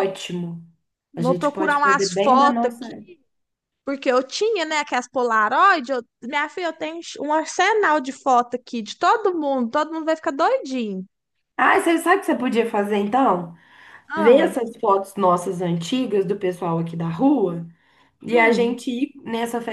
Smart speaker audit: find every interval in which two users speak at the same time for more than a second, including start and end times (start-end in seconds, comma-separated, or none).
1.1-2.9